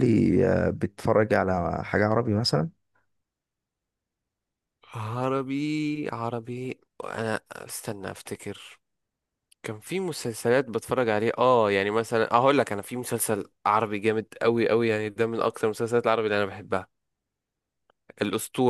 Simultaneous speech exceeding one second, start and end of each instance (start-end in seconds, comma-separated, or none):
none